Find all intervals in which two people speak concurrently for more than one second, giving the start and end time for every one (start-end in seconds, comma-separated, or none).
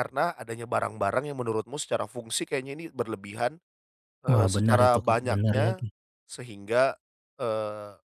4.3-5.8